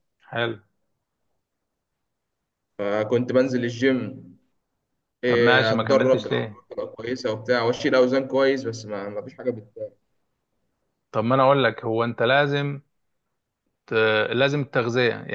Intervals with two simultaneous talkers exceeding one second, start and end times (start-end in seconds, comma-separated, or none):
5.3-6.6